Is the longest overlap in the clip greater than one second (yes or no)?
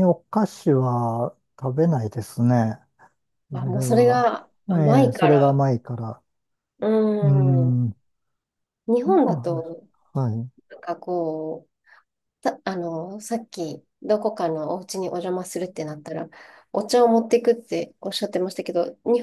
yes